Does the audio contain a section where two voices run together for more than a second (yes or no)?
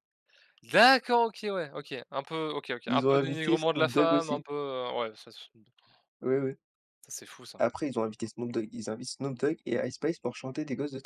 yes